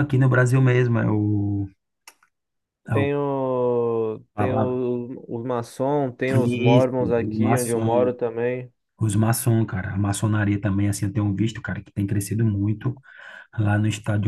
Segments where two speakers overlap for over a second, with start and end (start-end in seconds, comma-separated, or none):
6.5-8.1